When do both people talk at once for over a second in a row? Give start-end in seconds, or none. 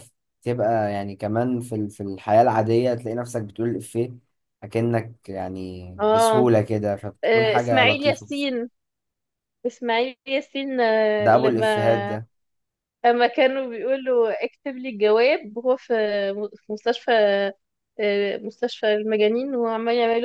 7.2-8.5